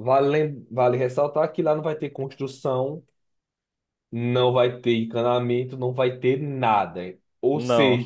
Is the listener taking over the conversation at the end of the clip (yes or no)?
no